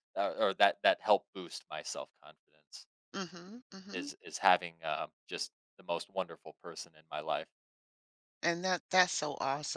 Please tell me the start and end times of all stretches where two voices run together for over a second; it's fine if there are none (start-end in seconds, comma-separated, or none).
none